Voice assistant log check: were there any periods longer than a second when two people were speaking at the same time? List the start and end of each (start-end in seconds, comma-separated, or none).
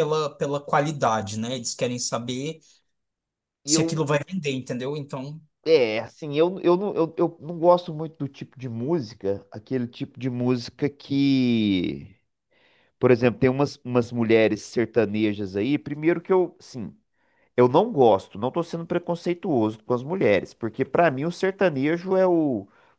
none